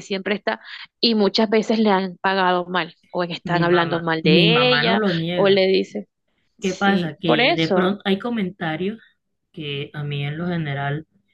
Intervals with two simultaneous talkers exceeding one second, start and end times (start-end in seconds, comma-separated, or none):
3.4-5.6, 6.6-7.9